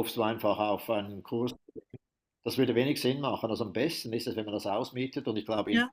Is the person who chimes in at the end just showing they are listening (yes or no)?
yes